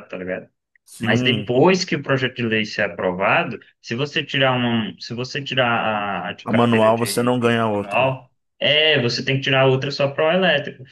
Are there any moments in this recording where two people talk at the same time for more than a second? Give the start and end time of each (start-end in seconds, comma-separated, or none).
6.4-8.1